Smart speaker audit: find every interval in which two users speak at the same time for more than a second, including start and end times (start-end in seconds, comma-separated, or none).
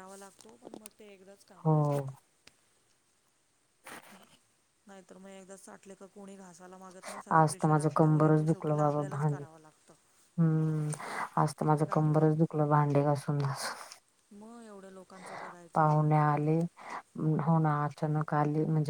7.4-9.4